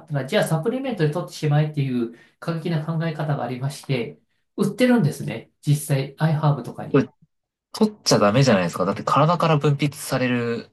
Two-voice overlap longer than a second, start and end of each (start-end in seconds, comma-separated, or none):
none